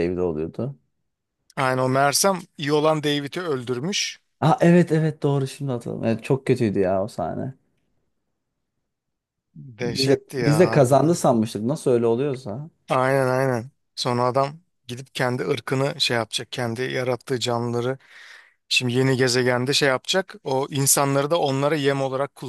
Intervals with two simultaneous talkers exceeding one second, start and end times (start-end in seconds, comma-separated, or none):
9.8-11.2